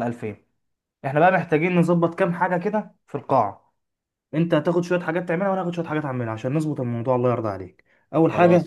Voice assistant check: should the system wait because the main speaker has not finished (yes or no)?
yes